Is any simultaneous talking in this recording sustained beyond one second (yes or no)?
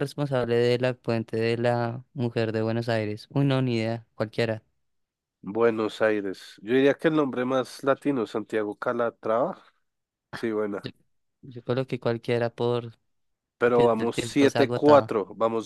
yes